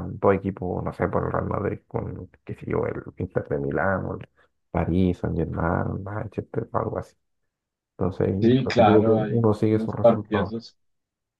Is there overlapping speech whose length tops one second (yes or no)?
yes